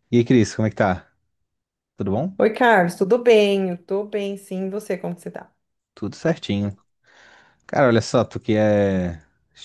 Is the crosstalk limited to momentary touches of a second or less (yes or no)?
yes